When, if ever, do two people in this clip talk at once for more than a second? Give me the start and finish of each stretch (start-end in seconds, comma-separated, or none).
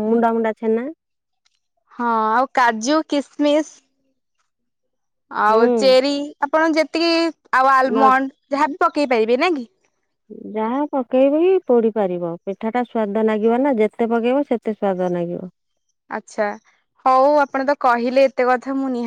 none